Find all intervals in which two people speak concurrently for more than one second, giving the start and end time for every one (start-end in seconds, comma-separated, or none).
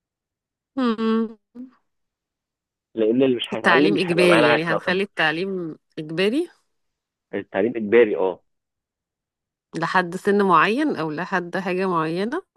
3.5-5.0